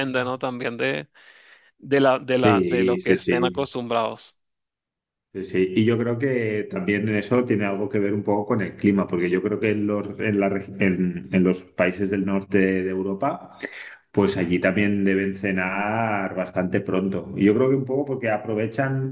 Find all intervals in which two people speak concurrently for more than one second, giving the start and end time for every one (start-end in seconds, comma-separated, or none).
2.3-3.7